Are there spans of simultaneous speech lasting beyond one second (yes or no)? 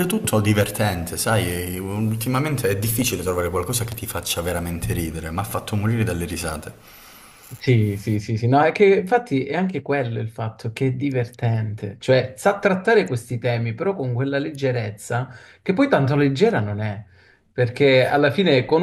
no